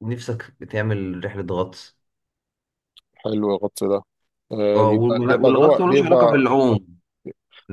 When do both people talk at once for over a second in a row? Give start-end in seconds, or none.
4.8-6.5